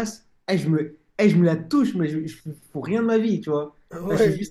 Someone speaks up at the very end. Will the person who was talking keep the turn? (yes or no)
yes